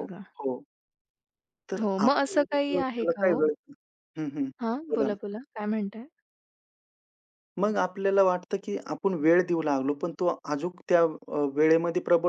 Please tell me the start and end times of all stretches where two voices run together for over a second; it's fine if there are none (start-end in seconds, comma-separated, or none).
1.8-3.5